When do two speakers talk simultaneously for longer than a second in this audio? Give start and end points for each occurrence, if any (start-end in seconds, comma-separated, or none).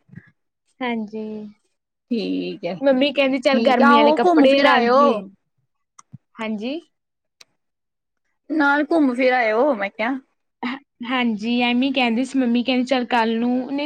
3.4-5.0